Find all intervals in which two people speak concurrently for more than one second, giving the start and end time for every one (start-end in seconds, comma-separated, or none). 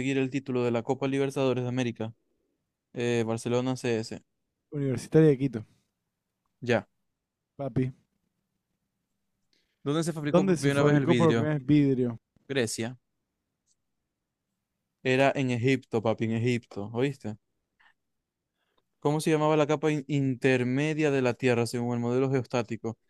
10.3-11.5